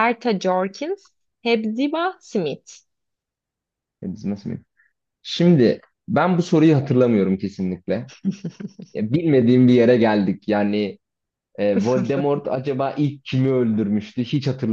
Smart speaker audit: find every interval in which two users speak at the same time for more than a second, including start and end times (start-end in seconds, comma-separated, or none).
none